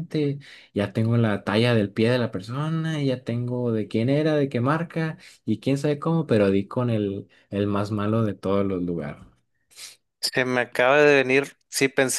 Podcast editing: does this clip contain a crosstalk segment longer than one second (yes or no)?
no